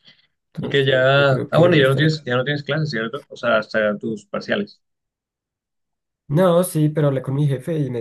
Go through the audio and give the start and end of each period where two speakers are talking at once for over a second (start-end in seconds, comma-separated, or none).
0.6-2.2